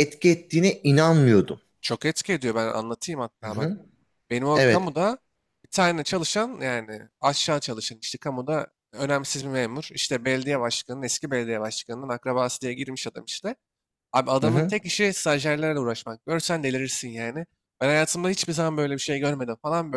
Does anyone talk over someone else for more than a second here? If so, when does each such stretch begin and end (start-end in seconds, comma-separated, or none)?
none